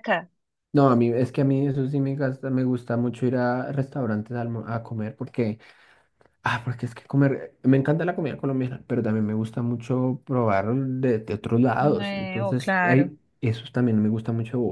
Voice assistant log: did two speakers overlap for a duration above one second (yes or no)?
yes